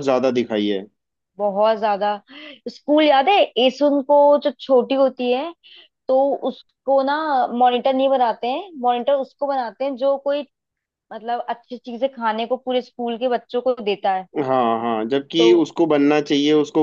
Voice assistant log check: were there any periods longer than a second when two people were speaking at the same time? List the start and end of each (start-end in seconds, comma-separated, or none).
none